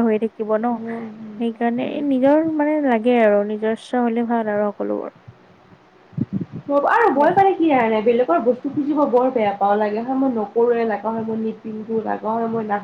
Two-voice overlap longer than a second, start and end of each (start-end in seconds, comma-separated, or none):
none